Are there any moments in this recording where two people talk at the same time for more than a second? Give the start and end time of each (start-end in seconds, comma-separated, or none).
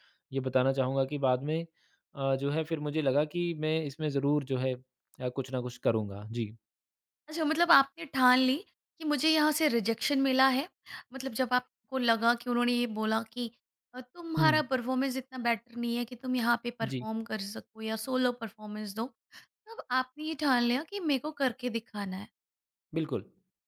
none